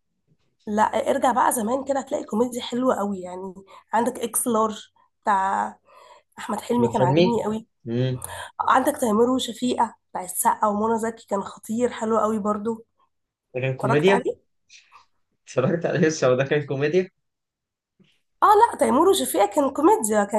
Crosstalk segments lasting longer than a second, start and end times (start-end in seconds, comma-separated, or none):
none